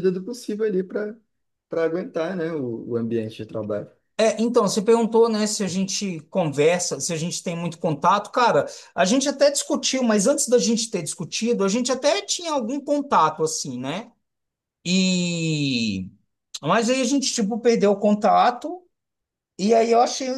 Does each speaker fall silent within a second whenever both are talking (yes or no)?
yes